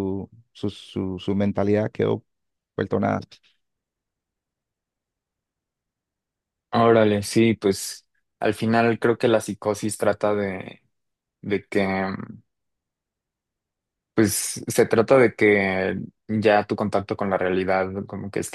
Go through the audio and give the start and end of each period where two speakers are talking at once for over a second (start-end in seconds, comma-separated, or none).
none